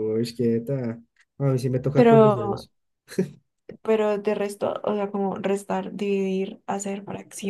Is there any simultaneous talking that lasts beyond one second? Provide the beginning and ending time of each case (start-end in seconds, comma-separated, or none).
none